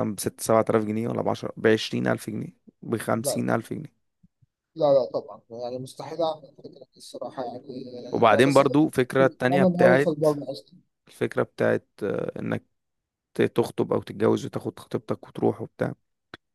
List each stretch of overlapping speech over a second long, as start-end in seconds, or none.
8.3-10.3